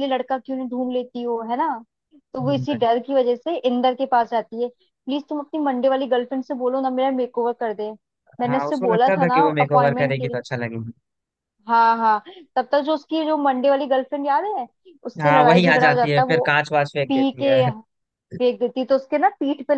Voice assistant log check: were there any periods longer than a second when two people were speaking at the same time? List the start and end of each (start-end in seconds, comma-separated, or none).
8.5-10.4, 15.2-16.4